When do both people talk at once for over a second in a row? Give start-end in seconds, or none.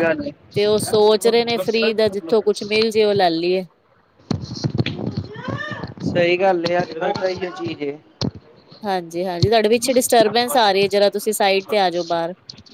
none